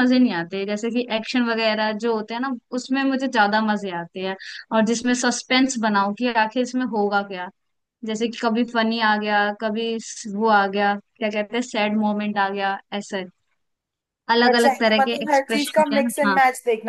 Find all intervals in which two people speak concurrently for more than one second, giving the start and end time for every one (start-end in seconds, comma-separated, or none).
14.5-16.4